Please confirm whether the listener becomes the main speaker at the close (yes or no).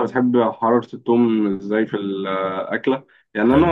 no